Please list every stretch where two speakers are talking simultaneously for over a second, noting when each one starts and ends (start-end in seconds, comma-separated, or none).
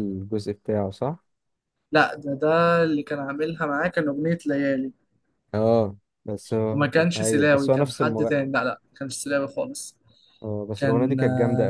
6.7-8.5